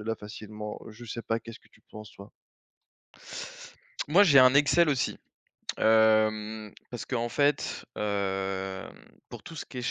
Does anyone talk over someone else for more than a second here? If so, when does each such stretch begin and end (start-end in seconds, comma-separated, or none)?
none